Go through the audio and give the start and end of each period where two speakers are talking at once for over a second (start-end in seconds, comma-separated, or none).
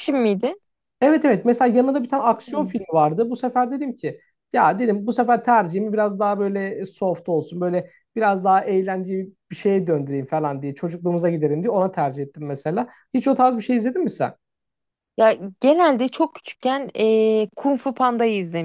none